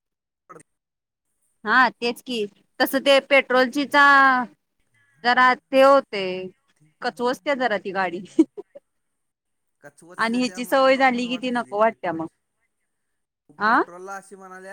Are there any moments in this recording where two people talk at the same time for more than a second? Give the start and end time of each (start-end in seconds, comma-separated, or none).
10.2-12.3